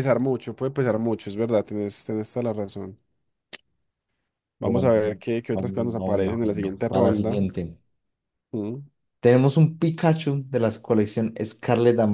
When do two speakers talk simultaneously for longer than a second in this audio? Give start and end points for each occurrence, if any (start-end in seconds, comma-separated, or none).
5.5-7.4